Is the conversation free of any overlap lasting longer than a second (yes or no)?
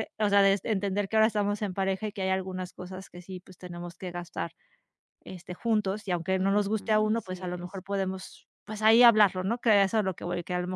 no